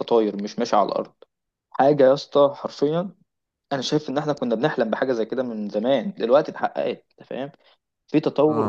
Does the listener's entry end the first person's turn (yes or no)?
no